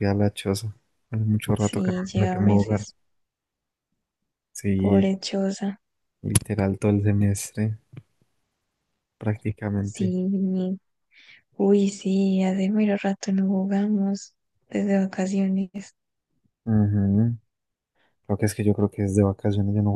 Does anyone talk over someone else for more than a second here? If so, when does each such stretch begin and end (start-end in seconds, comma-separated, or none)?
1.6-2.9